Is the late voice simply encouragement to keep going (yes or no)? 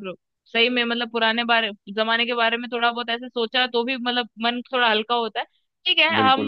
yes